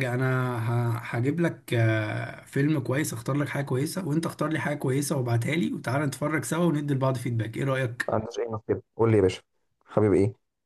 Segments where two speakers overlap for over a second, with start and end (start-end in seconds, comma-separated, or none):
none